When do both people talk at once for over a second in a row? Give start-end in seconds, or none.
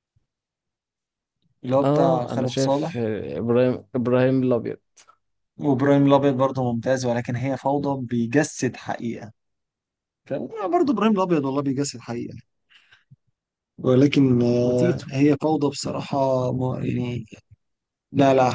1.8-3.0